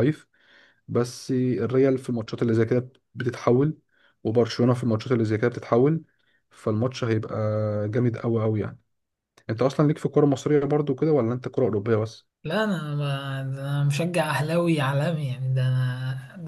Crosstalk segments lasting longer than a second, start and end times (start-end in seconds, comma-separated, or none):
none